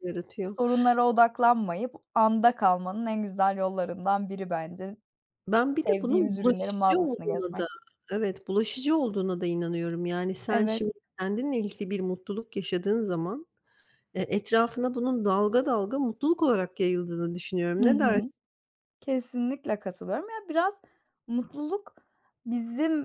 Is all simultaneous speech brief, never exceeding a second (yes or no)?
no